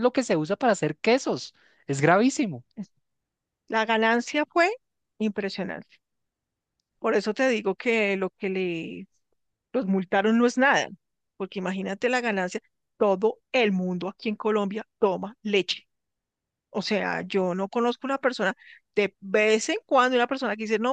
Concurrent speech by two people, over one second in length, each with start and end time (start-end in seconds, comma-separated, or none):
none